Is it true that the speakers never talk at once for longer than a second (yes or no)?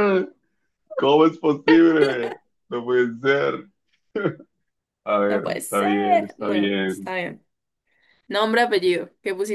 no